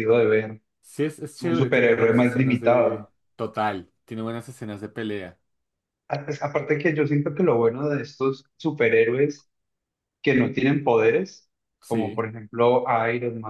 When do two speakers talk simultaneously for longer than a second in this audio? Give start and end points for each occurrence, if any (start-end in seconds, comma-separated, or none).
1.4-3.1